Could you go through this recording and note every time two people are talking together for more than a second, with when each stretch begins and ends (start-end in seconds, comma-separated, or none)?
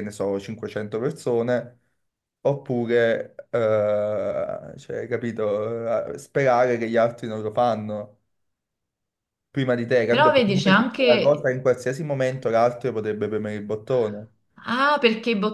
10.1-11.5